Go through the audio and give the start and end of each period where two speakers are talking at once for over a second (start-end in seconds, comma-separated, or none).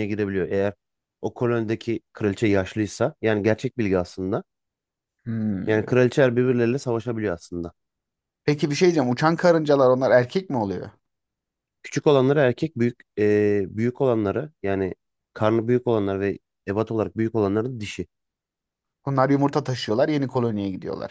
none